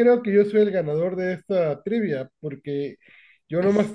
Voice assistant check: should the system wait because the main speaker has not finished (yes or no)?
yes